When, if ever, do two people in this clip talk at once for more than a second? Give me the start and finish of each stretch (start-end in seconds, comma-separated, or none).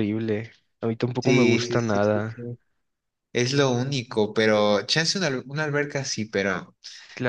1.2-2.4